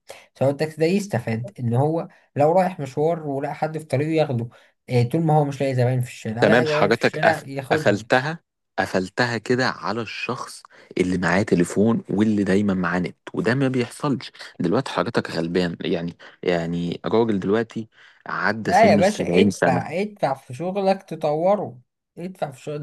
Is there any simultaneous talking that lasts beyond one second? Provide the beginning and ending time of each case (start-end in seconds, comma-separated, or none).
6.4-8.0, 18.6-19.9